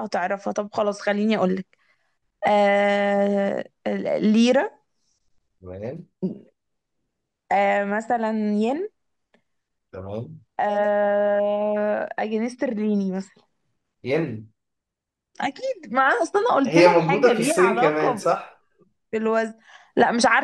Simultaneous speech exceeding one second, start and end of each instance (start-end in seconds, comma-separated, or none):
16.6-18.2